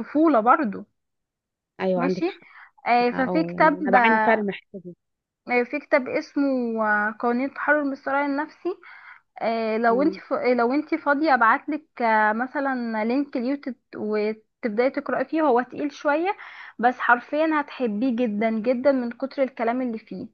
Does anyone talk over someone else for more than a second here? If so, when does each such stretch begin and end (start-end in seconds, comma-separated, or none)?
3.1-4.4